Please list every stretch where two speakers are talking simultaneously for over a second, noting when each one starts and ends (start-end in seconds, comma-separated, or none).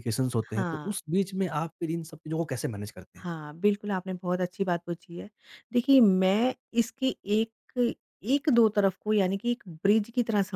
none